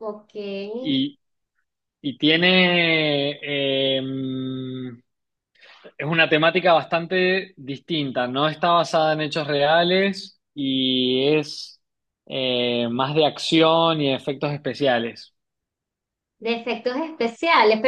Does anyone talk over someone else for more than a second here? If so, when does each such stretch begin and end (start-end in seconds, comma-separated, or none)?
none